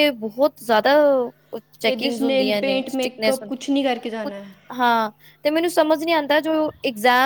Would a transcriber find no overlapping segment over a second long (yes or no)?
no